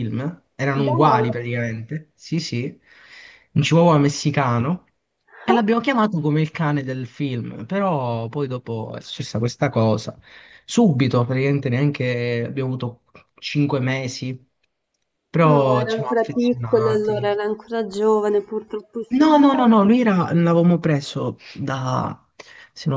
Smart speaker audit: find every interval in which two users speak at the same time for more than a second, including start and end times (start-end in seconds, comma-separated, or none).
15.4-17.4